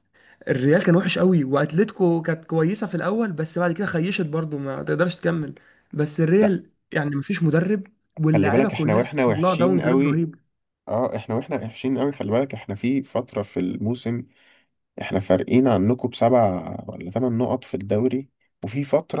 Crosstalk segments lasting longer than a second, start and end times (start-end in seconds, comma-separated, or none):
8.3-10.2